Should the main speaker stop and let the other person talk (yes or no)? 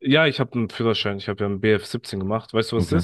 yes